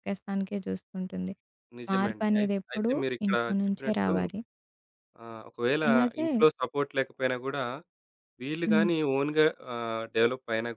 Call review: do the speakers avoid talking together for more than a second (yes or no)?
no